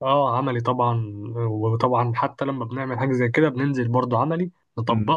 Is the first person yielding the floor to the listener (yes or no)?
no